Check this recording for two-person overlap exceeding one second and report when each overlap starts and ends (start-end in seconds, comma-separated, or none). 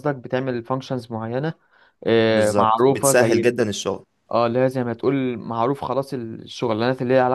2.3-3.5